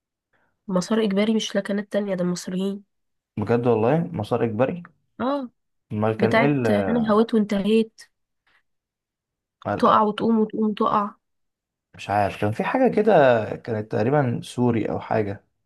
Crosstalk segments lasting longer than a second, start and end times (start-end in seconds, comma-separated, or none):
none